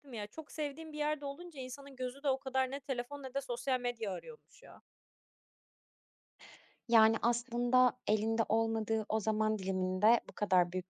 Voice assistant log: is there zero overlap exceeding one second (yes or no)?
yes